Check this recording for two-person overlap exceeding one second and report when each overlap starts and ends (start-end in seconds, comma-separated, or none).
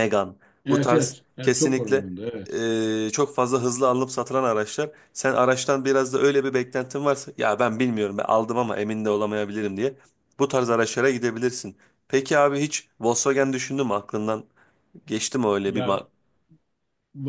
0.7-2.1